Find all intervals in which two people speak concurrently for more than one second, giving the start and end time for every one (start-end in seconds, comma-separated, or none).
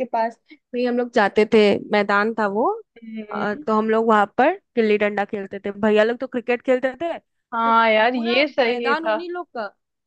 7.6-9.2